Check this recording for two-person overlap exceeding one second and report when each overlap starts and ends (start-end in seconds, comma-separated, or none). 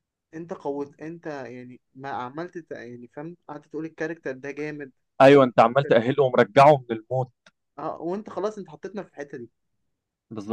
none